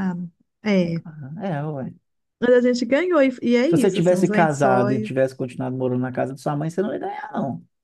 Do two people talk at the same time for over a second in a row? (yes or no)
yes